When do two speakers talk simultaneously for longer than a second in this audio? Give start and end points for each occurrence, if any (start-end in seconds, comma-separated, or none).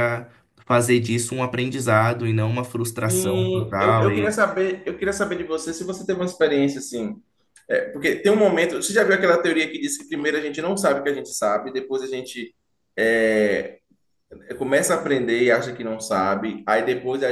3.1-4.3